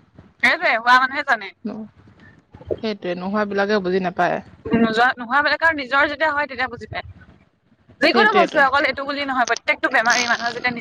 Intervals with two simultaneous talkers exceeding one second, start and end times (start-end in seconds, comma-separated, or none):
none